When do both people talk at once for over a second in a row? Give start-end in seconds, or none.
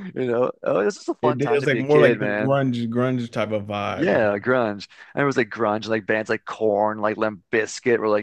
1.2-2.6